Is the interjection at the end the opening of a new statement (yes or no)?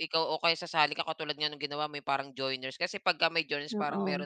no